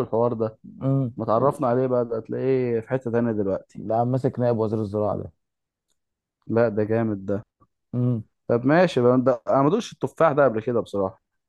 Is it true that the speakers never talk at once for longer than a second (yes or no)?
yes